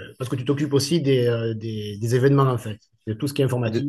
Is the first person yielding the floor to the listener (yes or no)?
yes